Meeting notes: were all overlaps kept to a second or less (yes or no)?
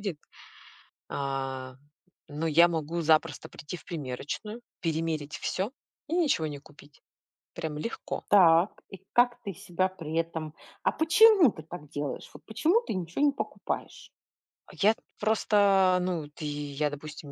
yes